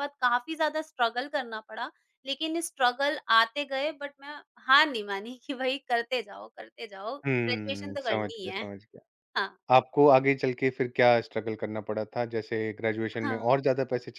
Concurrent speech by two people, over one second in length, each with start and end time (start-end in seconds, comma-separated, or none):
7.2-8.7